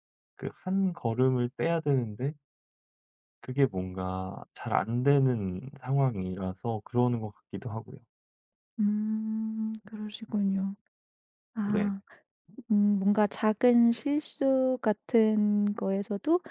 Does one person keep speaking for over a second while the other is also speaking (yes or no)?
no